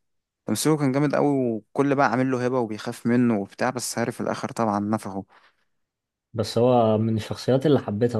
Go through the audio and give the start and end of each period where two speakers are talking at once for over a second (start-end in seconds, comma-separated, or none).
none